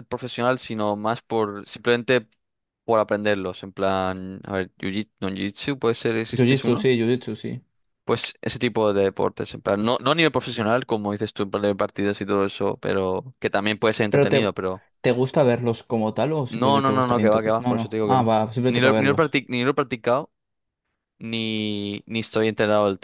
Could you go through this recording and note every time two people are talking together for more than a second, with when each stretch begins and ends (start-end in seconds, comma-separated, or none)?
16.5-19.4